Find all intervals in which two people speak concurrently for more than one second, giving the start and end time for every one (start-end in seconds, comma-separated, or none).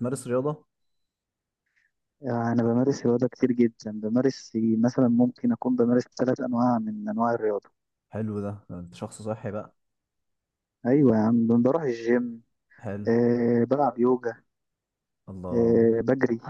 none